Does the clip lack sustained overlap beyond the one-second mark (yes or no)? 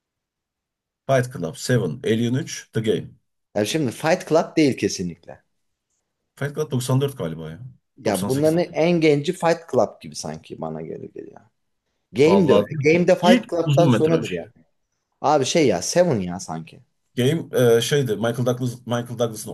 no